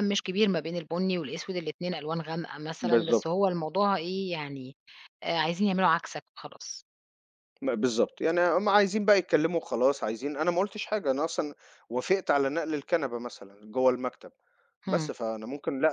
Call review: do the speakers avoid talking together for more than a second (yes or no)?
yes